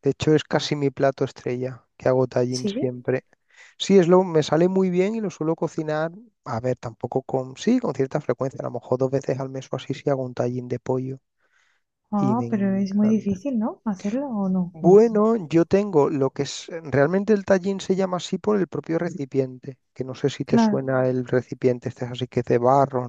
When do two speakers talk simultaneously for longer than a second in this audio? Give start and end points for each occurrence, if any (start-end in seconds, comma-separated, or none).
12.2-13.4